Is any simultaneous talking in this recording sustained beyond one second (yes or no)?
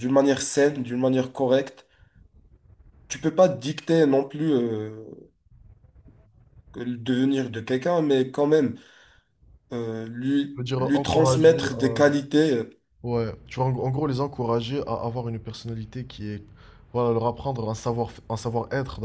yes